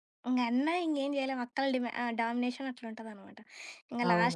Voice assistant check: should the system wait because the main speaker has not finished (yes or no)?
yes